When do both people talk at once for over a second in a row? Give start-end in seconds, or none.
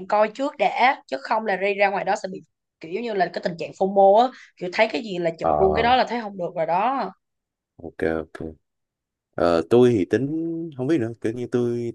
none